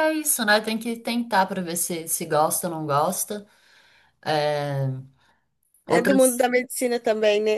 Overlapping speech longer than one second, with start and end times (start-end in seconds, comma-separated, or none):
none